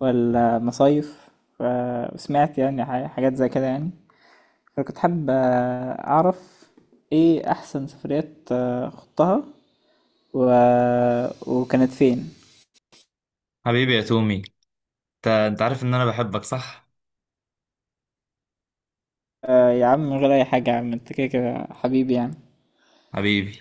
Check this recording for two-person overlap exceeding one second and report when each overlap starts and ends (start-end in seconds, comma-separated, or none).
none